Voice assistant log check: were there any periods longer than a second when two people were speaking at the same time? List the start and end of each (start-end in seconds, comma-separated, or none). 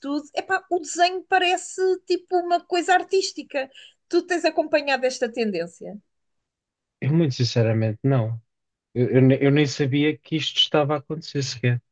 none